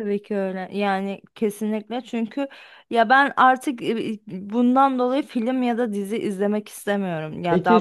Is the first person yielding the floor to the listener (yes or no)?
yes